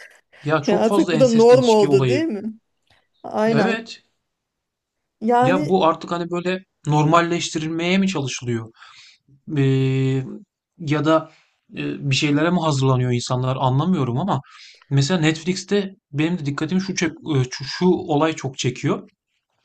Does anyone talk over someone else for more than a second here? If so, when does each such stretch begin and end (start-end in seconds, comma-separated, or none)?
0.7-2.2